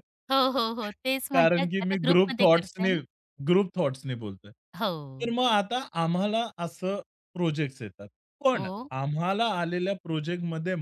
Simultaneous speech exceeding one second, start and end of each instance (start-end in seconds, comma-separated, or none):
1.4-3.0